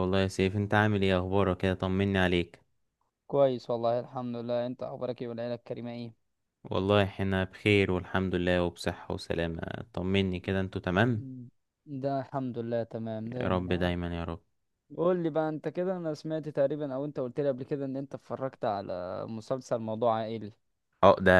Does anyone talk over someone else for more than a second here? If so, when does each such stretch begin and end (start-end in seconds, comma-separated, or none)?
none